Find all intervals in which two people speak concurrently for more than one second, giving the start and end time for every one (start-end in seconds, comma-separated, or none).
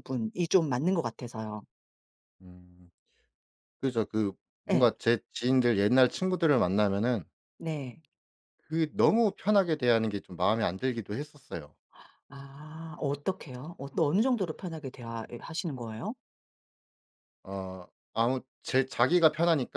none